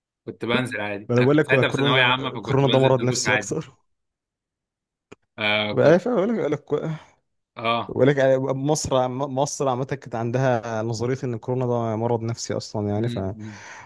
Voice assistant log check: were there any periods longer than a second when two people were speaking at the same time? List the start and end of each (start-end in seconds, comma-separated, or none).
1.1-3.5